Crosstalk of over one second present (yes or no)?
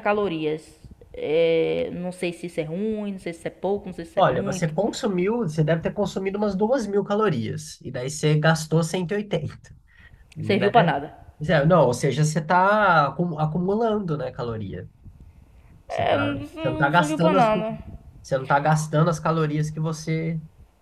yes